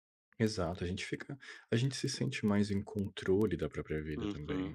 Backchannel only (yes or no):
no